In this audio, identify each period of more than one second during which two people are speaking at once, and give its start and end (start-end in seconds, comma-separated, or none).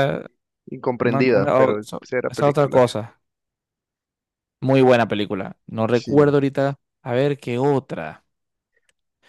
1.0-2.8